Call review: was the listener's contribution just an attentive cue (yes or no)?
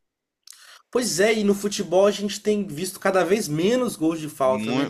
no